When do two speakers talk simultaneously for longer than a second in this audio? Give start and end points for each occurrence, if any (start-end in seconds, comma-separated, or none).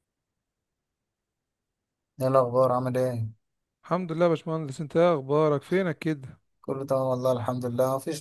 none